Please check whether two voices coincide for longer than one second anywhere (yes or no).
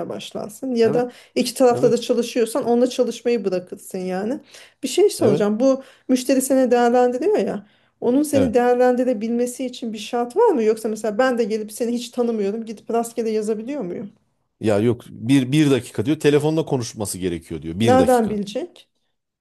no